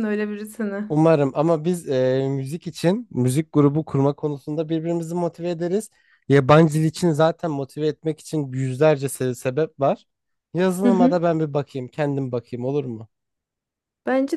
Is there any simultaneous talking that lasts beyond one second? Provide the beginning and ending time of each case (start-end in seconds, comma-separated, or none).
none